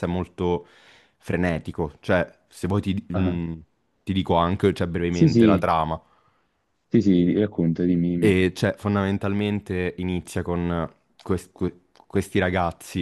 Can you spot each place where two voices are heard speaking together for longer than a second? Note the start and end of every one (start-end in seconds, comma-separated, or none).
none